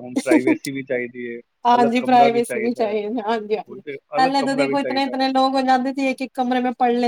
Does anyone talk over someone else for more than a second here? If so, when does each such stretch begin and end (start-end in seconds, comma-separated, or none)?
none